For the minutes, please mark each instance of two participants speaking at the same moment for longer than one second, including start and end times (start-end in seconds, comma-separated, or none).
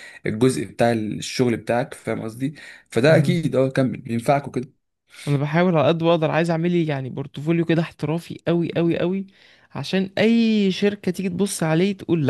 none